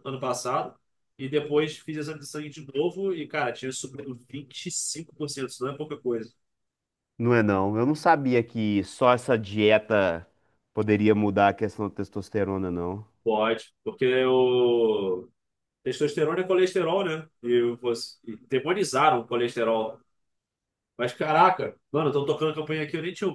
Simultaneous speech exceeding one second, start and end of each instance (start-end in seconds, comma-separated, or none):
none